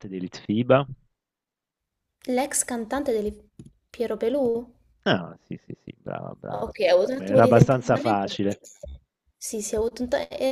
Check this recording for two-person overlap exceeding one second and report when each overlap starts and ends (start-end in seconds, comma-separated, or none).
6.5-8.3